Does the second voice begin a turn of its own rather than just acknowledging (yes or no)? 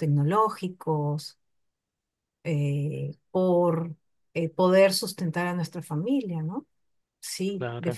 no